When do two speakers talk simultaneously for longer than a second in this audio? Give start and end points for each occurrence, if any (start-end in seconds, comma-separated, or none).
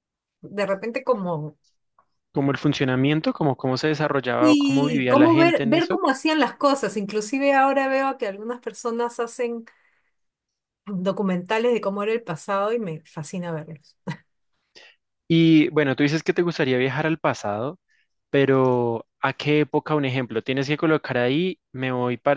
4.4-6.0